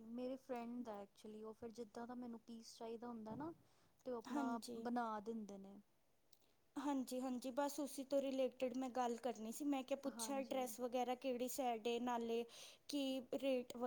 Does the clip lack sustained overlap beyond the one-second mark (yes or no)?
yes